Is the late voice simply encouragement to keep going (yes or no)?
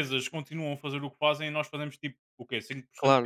no